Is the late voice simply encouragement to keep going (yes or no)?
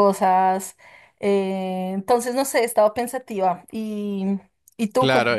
no